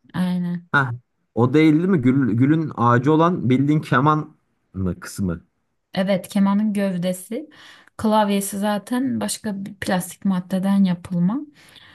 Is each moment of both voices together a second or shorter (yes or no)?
yes